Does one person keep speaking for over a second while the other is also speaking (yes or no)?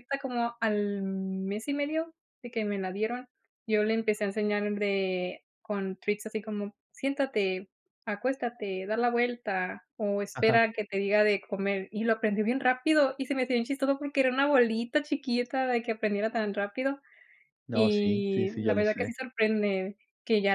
yes